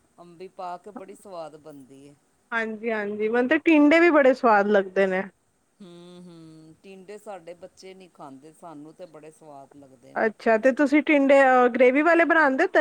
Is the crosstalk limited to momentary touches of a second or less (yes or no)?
yes